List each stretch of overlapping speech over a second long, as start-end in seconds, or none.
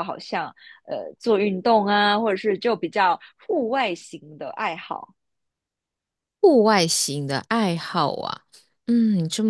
none